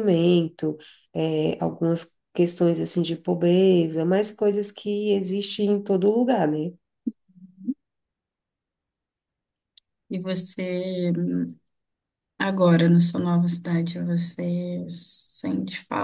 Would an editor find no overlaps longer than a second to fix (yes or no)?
yes